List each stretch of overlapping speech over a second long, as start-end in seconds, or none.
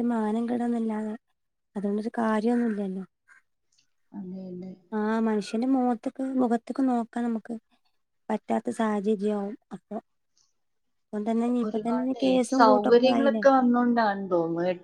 11.7-13.4